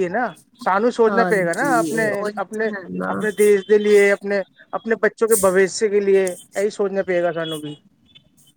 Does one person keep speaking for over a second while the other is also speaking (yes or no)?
yes